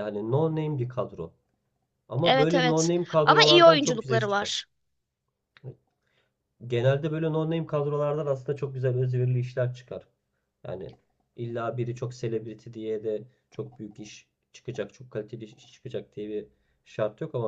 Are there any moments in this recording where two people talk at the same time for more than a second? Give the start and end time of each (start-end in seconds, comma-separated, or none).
2.2-4.5